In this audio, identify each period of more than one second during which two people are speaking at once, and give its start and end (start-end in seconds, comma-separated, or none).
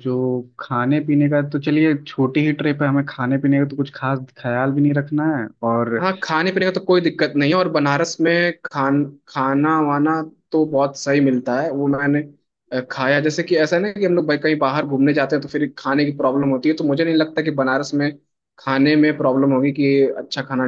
none